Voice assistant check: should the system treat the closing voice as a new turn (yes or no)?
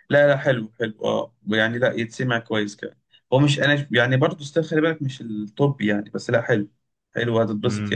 yes